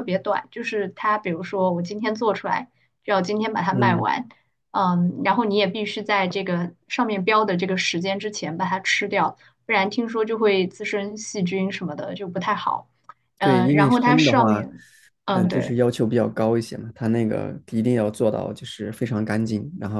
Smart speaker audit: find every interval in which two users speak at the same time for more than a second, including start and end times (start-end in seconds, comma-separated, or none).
13.4-14.7